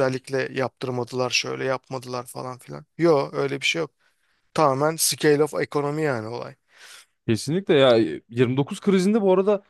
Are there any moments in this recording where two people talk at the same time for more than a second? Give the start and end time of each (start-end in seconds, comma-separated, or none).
none